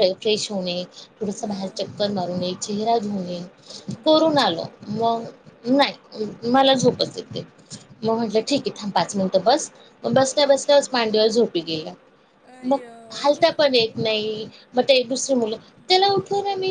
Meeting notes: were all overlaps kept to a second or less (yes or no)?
yes